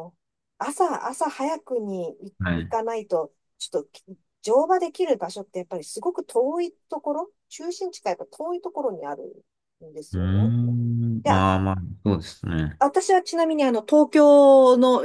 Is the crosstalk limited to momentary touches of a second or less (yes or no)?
yes